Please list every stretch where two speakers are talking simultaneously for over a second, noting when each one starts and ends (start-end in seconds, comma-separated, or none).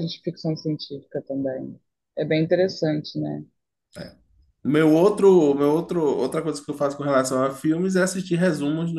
none